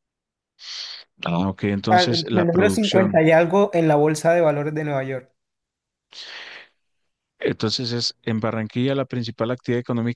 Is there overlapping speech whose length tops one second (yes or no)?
yes